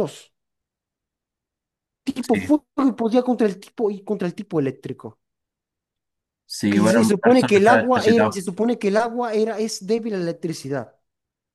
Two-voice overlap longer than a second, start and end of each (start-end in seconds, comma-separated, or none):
6.7-8.4